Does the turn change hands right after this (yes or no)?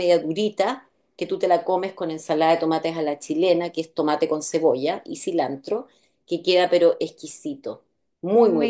yes